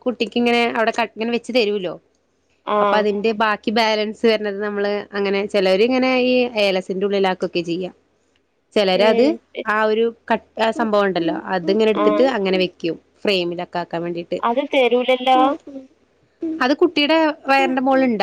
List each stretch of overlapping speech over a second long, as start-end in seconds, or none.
none